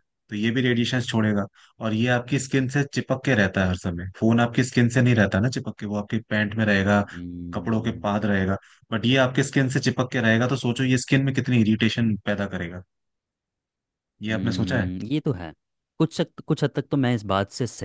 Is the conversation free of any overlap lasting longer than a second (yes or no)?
yes